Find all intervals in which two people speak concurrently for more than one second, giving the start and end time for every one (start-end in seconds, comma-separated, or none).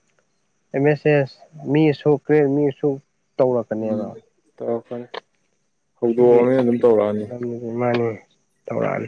none